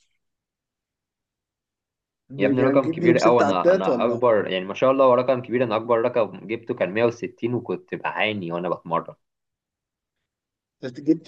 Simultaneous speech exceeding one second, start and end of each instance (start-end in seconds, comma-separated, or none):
2.4-4.2